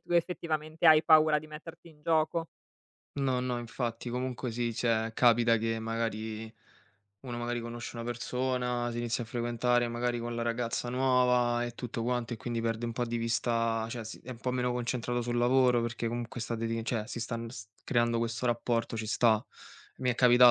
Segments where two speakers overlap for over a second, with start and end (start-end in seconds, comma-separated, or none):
none